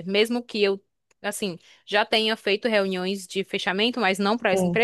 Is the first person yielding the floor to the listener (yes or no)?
no